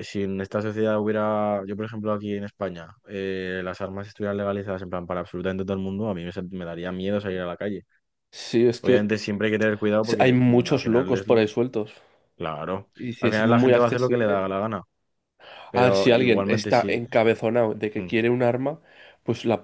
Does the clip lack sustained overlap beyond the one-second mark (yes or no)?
no